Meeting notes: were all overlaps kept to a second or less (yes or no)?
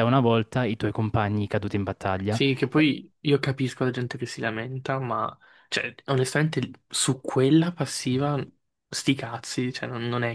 yes